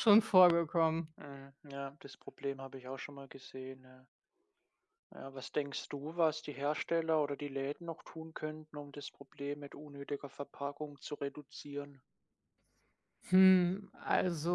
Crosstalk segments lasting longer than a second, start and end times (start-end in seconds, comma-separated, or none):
none